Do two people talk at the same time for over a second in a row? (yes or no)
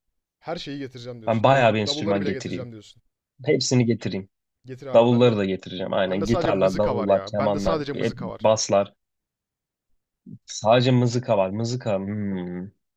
yes